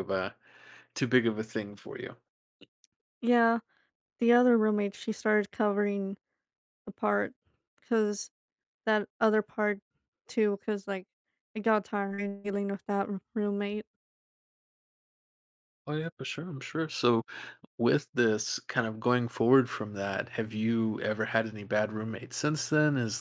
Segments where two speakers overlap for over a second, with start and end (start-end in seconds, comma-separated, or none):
none